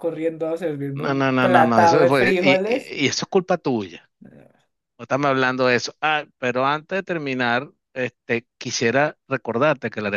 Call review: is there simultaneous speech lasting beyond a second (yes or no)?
yes